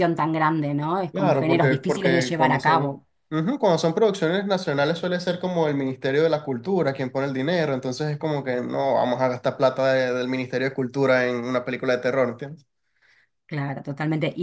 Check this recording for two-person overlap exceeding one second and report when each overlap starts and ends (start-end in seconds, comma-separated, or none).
1.1-3.0